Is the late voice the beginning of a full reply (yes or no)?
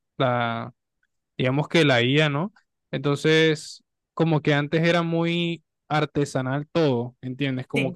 no